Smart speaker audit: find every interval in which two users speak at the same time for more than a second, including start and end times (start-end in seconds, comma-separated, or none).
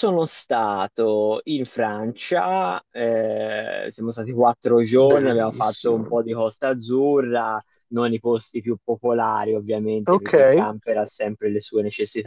4.9-6.2